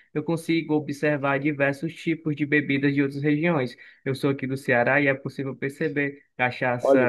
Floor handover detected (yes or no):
no